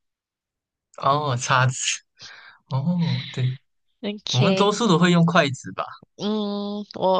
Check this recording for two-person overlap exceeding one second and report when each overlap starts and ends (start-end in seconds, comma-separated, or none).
none